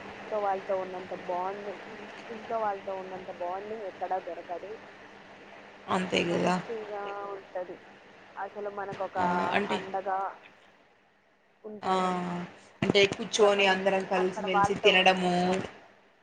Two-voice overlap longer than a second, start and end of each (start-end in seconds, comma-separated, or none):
13.4-15.3